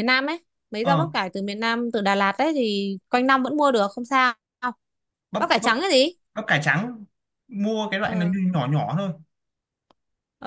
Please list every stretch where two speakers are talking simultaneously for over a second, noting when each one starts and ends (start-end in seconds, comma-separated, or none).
none